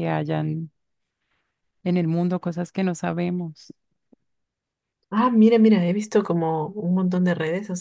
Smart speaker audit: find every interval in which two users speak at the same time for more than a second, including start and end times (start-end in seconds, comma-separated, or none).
none